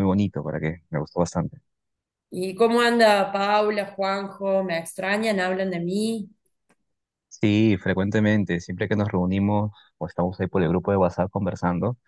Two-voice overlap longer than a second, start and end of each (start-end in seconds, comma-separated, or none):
none